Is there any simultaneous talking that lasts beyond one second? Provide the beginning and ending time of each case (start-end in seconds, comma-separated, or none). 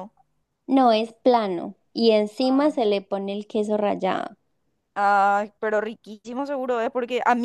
none